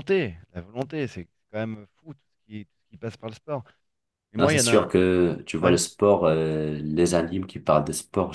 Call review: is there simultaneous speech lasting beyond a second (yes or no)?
no